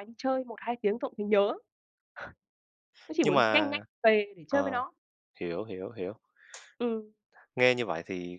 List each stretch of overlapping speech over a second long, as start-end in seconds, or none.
none